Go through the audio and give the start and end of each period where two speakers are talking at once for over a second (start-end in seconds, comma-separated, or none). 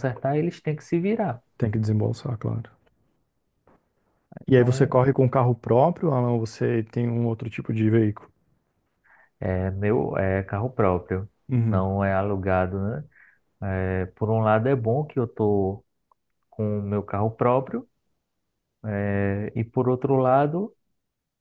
none